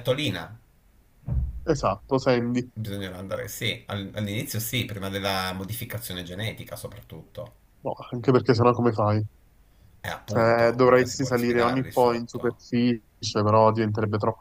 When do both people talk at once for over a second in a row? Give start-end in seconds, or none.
10.3-12.6